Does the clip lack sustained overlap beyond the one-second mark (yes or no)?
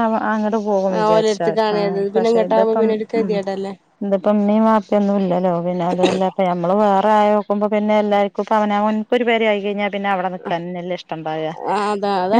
no